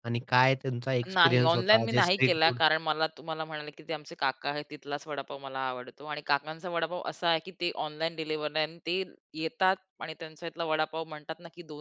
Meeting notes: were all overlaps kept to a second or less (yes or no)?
no